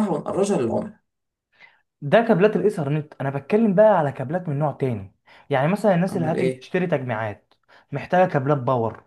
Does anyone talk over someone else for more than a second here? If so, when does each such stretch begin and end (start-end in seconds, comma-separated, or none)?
none